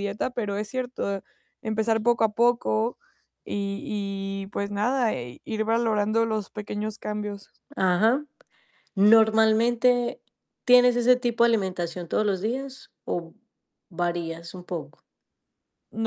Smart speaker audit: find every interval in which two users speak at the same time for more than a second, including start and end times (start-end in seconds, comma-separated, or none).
none